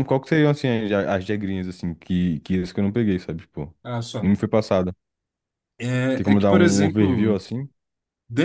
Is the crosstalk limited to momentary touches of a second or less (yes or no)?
no